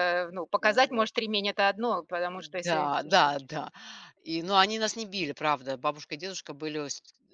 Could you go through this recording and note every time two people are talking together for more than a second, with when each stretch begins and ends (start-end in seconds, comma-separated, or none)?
none